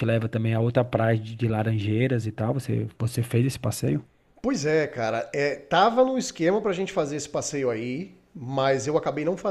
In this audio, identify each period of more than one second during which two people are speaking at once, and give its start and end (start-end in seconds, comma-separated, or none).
none